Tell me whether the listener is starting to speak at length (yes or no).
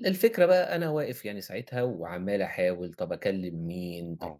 no